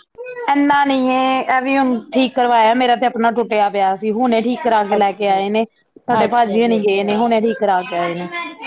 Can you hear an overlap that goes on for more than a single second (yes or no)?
yes